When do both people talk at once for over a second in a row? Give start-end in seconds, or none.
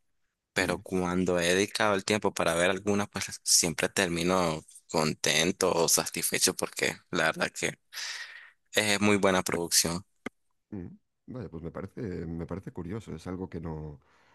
none